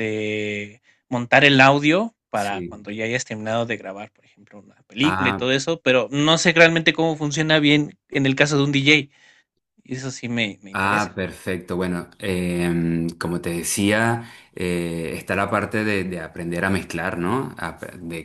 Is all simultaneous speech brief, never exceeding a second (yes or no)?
yes